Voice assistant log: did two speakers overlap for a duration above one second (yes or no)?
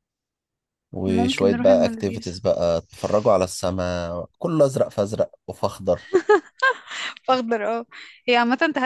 yes